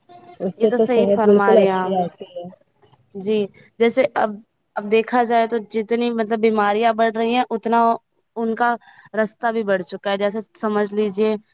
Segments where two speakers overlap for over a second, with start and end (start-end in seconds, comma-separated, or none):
0.6-2.1